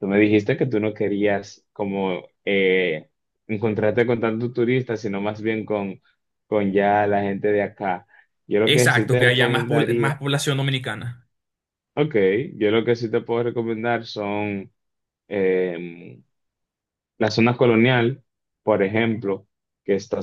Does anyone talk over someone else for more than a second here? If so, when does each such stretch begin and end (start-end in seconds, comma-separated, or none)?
8.6-10.2